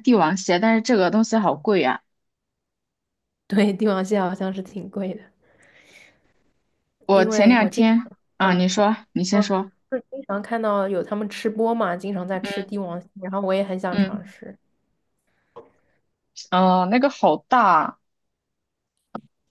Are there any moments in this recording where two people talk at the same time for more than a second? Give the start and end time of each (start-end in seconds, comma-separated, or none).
7.1-8.7